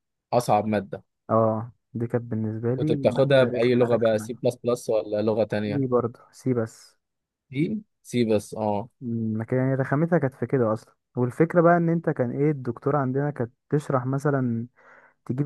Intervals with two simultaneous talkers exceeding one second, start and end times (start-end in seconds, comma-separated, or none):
2.8-4.4